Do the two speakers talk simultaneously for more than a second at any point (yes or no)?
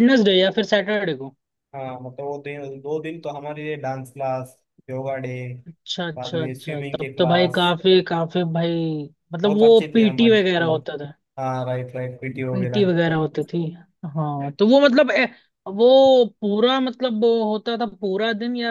yes